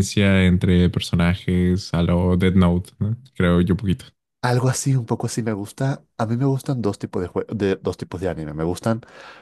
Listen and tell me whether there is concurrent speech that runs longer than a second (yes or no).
no